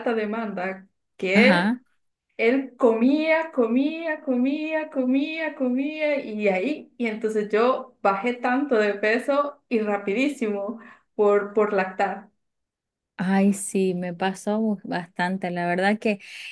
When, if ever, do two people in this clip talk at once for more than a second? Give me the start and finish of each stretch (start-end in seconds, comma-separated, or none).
none